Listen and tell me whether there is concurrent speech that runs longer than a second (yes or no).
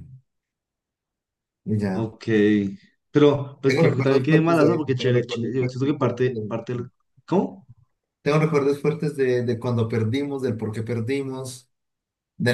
yes